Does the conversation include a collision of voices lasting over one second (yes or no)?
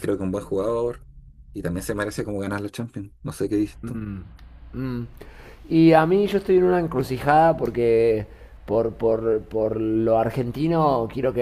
no